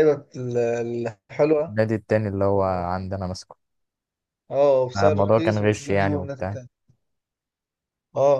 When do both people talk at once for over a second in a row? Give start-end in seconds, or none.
5.0-6.6